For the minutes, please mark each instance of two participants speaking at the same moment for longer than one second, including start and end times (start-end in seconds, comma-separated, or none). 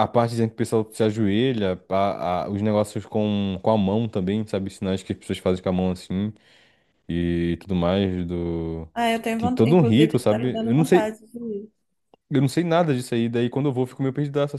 9.4-11.2